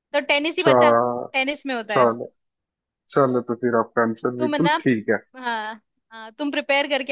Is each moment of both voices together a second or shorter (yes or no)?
yes